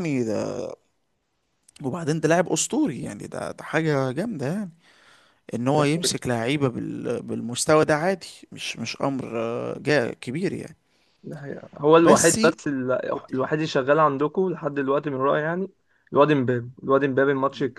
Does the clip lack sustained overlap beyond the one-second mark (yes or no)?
yes